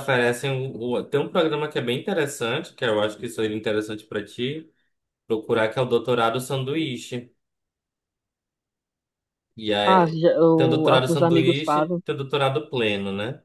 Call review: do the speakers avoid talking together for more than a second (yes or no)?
no